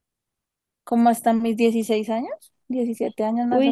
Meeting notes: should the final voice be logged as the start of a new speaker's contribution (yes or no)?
yes